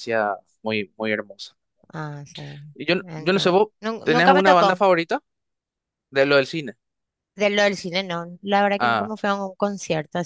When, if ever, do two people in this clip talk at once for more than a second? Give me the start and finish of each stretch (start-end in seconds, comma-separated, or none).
3.0-4.8